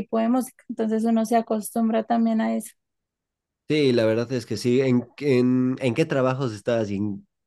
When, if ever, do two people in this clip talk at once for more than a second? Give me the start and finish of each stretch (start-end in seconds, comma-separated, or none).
none